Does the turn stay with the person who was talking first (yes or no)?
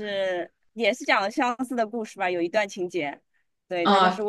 yes